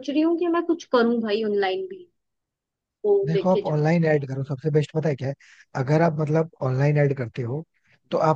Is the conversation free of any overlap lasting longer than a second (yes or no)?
yes